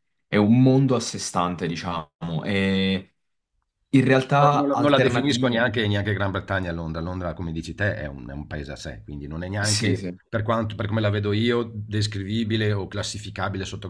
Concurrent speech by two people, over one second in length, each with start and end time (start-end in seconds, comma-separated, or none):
4.4-5.7